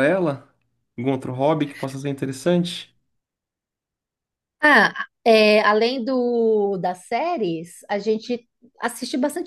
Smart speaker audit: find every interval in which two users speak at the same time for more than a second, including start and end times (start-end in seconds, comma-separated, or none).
none